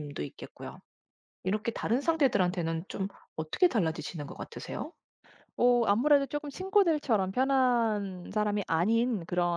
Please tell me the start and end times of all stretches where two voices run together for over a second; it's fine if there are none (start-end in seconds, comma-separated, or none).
none